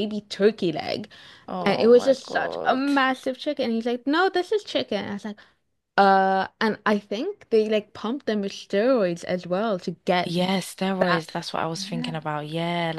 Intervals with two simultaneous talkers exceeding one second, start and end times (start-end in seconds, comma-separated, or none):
1.6-2.9